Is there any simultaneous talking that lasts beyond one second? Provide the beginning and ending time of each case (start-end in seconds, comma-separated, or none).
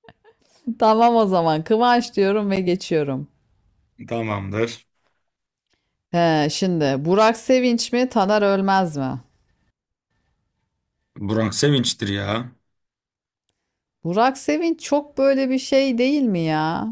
none